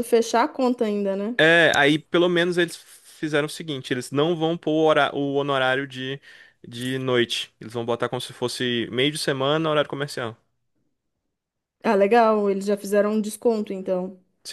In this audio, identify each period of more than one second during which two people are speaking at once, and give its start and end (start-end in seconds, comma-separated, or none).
none